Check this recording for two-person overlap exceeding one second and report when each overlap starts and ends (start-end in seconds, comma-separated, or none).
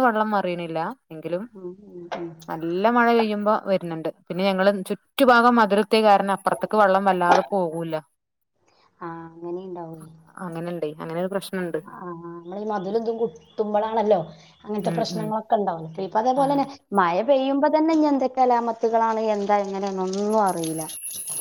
none